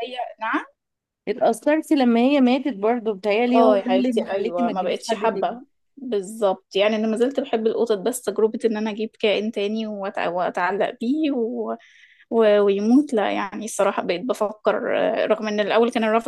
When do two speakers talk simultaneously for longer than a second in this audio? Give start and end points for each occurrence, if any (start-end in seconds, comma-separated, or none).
3.5-5.6